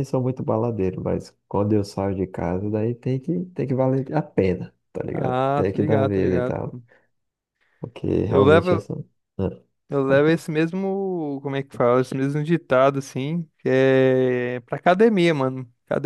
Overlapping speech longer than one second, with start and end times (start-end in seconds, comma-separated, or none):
5.1-6.8